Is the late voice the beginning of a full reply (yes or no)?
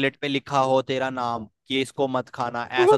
no